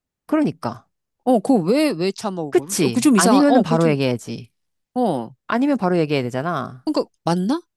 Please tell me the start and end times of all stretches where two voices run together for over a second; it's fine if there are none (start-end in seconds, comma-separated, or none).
2.5-4.0